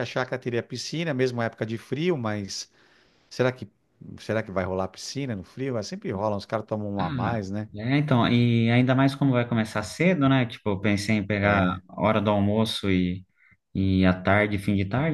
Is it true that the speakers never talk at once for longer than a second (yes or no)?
yes